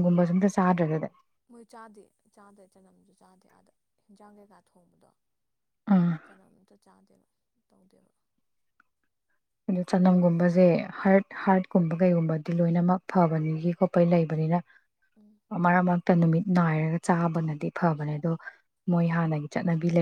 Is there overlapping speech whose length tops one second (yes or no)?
no